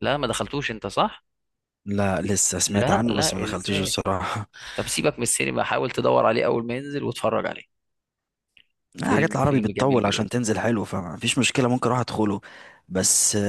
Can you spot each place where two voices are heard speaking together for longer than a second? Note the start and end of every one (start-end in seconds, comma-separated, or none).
2.7-4.0, 9.0-10.3